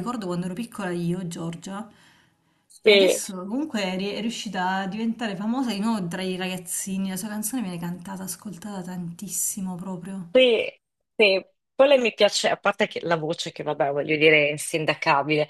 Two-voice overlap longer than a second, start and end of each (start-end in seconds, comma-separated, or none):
none